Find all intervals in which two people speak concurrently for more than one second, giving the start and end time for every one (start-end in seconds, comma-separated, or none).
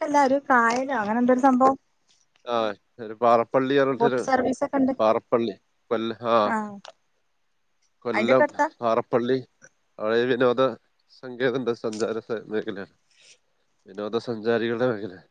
none